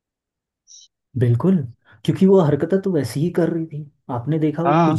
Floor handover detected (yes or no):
no